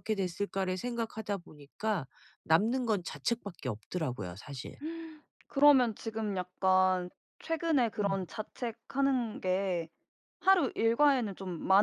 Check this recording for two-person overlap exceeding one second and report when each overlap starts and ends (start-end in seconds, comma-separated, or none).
none